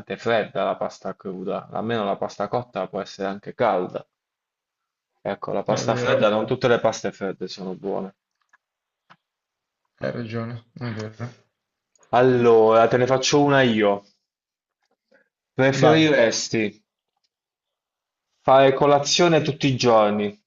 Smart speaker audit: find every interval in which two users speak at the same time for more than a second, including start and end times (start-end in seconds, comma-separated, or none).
none